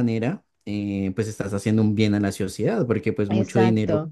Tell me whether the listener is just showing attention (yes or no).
yes